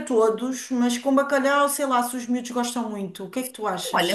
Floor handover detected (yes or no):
yes